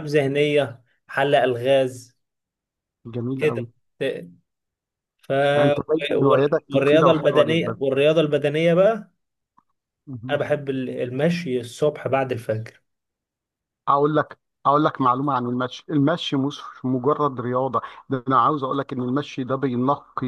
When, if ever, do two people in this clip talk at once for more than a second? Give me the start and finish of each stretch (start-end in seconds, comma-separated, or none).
6.1-7.8